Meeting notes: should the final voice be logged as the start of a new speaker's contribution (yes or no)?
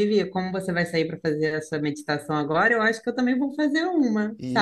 yes